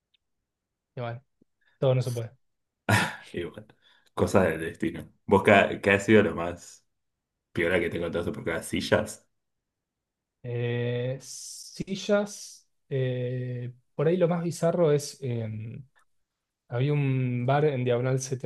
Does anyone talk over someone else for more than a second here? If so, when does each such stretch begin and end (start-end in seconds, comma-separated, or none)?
none